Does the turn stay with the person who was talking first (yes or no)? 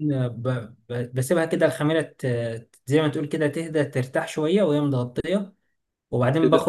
no